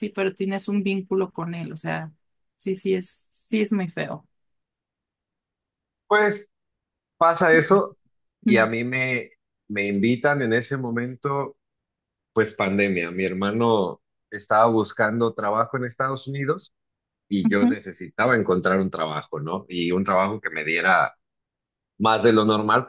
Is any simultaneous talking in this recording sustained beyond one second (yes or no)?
no